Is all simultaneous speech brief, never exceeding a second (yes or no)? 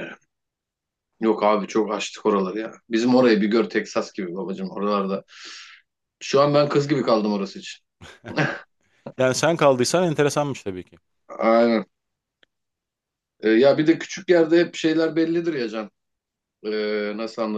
yes